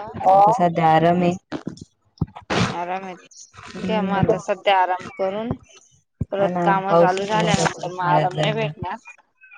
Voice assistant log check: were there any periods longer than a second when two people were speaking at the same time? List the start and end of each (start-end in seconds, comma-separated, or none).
6.4-8.7